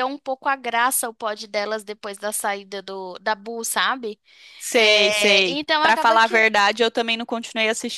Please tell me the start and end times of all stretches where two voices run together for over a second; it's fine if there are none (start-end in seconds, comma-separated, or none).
4.8-6.5